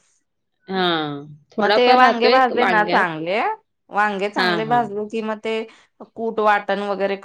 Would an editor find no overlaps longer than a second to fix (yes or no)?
no